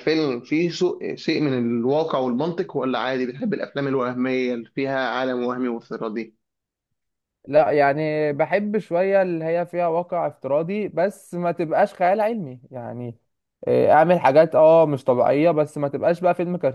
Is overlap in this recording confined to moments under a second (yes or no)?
yes